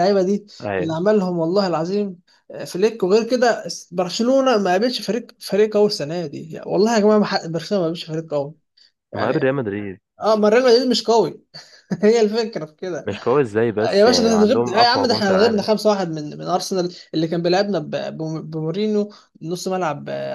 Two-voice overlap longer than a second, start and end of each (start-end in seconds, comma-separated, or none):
13.9-15.7